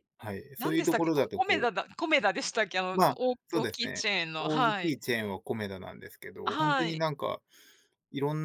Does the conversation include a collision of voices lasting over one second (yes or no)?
yes